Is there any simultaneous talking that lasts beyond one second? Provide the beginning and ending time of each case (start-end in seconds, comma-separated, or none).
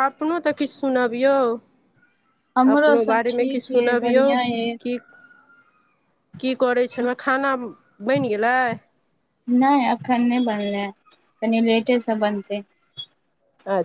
2.8-4.2